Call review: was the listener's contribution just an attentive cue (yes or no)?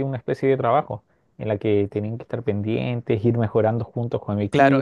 no